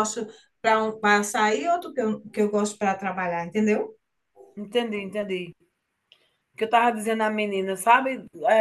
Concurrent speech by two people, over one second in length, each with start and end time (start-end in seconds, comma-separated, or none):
none